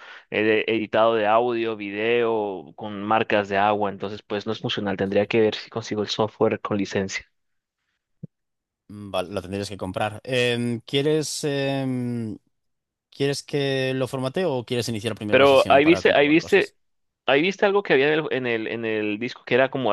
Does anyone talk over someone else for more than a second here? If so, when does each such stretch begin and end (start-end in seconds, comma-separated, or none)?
15.3-16.7